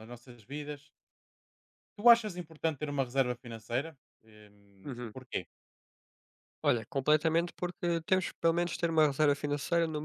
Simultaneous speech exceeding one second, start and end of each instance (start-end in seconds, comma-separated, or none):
none